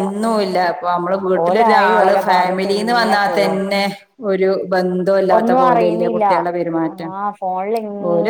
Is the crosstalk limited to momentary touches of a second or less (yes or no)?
no